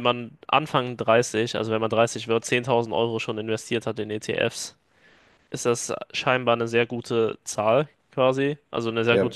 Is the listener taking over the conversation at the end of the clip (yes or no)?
no